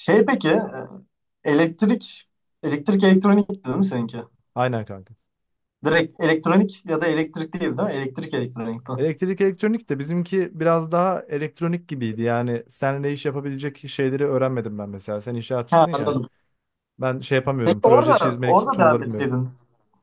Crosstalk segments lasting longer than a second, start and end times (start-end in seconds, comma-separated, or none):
17.6-19.3